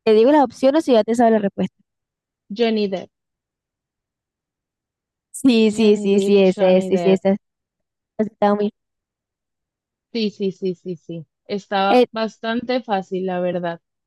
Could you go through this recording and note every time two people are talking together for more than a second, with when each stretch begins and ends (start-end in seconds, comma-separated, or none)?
5.7-7.2